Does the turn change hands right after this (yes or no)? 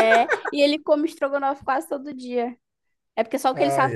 no